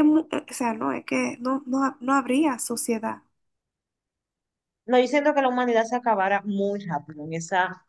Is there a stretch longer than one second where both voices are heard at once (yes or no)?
no